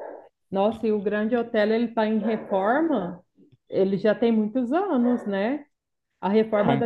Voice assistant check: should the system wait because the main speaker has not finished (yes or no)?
yes